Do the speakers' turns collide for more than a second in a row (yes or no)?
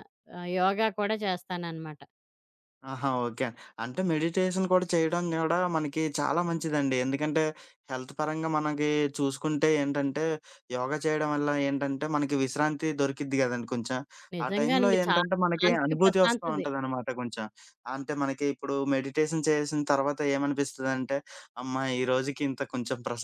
yes